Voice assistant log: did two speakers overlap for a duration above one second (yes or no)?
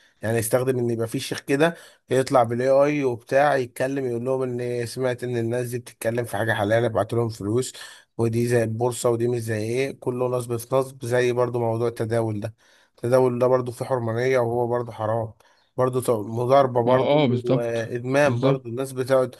yes